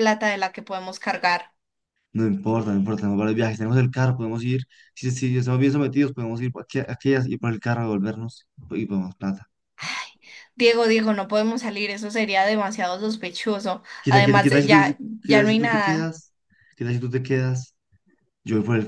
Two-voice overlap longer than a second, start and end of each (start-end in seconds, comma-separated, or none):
14.0-16.1